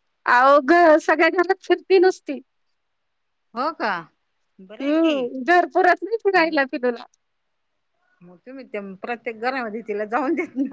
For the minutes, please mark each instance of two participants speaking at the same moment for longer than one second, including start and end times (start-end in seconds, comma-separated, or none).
none